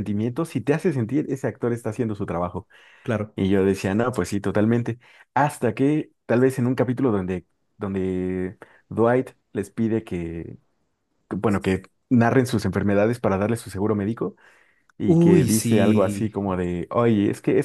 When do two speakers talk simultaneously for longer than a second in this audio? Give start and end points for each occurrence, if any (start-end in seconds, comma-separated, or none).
15.1-16.3